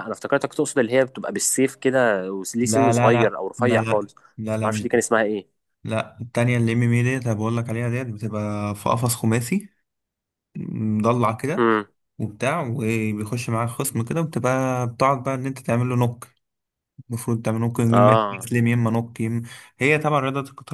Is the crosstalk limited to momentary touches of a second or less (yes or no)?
no